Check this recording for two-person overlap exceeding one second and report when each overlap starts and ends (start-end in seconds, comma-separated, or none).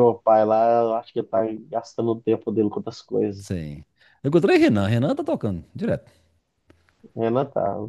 none